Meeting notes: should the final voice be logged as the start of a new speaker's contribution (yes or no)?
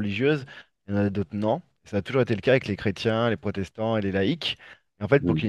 no